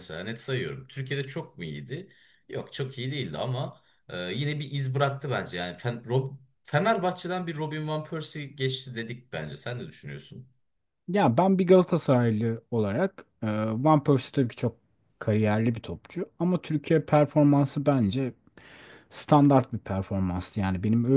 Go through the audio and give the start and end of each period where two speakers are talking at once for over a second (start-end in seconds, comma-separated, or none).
none